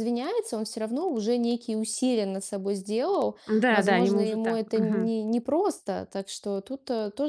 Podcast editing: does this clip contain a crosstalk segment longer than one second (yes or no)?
yes